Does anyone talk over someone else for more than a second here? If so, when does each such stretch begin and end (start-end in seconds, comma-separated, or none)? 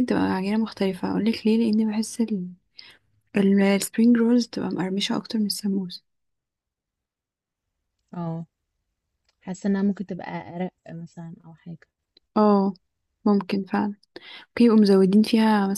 none